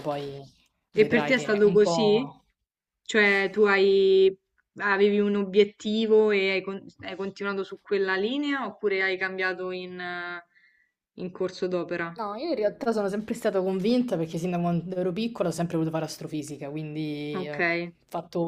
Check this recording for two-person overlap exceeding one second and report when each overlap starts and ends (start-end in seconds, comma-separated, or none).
0.9-2.2